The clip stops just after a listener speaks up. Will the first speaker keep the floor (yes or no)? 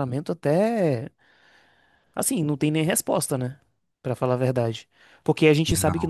yes